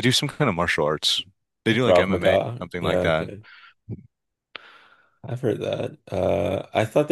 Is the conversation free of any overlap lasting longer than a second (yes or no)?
no